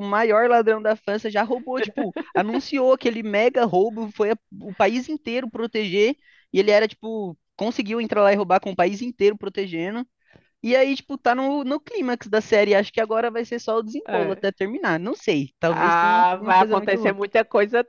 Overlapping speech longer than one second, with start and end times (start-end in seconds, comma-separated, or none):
15.7-17.1